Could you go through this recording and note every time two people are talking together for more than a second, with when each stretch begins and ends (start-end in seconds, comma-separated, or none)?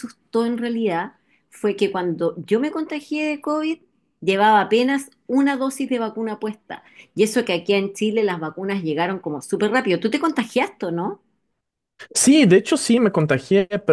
none